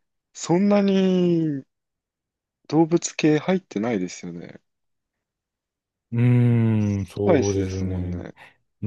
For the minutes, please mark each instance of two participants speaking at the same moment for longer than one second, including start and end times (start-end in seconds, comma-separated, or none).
6.8-8.2